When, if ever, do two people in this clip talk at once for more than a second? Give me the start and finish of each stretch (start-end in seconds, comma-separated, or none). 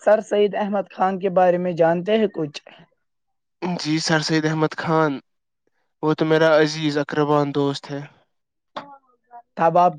none